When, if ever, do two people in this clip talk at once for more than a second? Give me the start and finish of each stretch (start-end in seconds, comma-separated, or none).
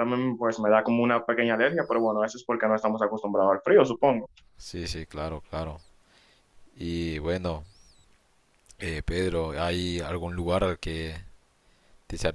none